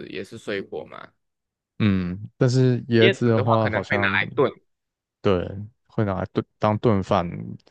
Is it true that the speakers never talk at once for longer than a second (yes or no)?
no